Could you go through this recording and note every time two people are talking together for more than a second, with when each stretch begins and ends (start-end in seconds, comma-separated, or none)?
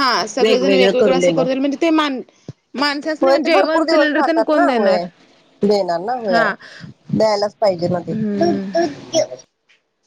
3.2-5.0